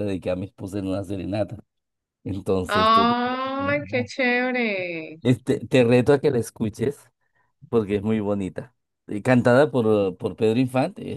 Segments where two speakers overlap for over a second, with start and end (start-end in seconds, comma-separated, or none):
2.7-4.1